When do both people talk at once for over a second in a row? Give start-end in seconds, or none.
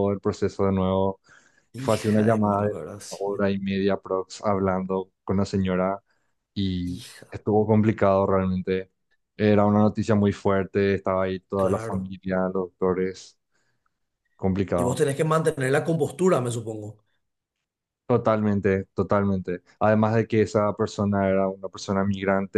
1.8-3.5